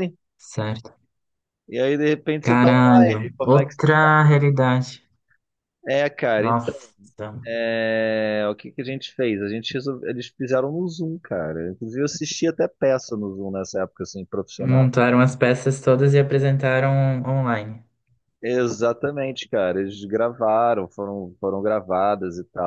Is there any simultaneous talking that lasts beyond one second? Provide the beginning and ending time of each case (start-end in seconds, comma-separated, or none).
2.4-3.9